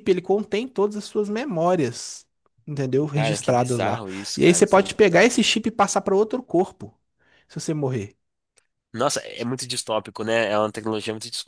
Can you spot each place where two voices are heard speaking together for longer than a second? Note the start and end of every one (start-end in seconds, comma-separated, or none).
3.1-5.3